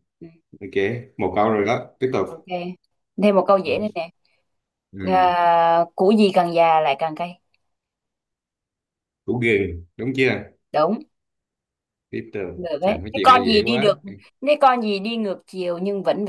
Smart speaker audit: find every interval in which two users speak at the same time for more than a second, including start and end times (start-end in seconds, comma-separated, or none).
12.5-14.0